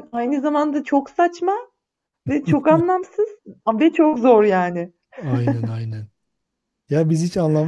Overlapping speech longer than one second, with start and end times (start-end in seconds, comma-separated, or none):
none